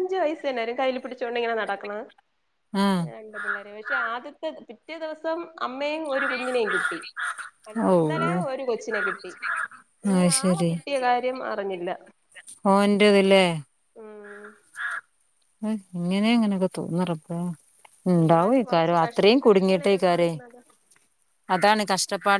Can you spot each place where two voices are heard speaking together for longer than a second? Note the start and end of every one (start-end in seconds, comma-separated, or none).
18.2-20.3